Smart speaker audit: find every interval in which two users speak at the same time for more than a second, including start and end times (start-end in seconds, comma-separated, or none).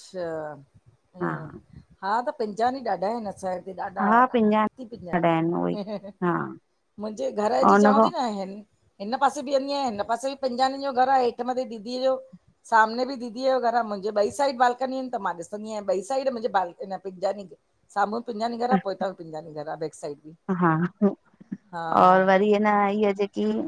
4.1-5.7